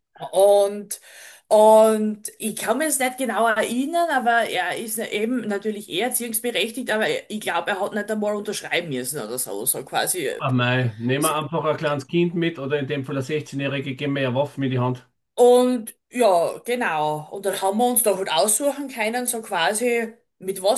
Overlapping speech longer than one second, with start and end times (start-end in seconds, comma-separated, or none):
none